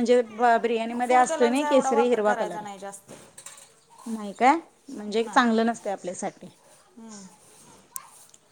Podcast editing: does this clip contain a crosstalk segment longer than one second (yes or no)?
yes